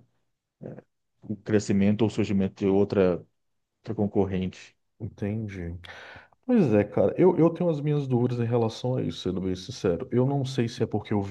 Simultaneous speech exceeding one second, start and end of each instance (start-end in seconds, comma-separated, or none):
none